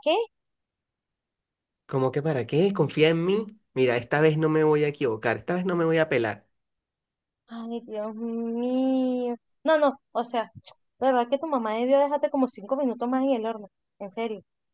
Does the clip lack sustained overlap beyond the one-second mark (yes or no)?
yes